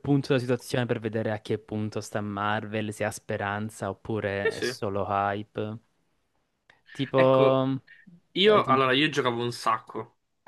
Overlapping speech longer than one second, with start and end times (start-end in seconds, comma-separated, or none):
none